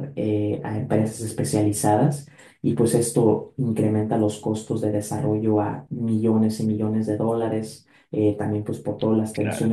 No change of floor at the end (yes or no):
yes